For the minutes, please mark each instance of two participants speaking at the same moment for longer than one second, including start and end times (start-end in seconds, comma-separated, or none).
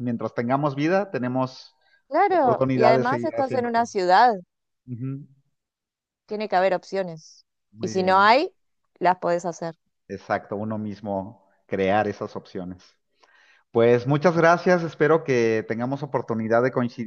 2.3-3.9